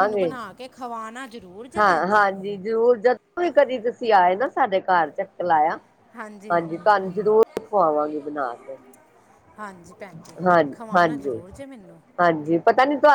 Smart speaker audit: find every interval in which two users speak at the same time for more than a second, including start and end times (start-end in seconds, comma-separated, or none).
none